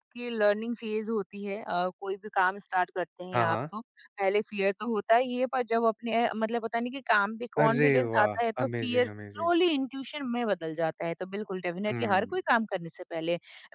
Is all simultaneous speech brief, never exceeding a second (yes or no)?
no